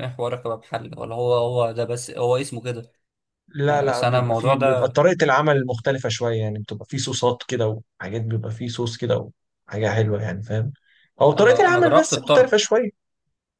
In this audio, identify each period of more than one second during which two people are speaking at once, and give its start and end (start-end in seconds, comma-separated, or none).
3.7-5.0, 11.4-12.6